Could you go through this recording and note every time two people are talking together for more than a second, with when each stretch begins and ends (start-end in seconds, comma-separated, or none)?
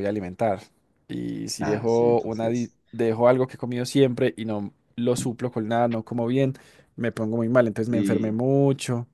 1.6-2.8